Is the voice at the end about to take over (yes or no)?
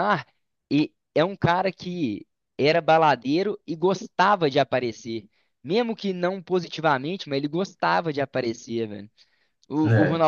no